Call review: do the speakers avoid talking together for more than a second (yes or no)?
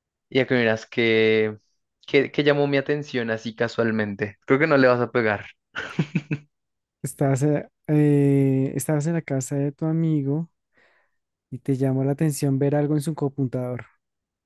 yes